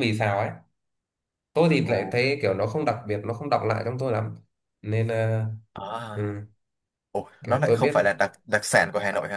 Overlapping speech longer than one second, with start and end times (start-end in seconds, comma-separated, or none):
none